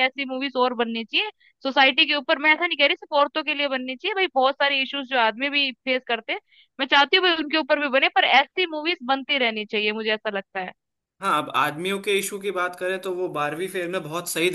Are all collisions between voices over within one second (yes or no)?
yes